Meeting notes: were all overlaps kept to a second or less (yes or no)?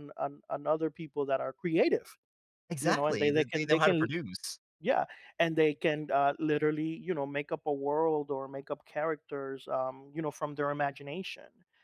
no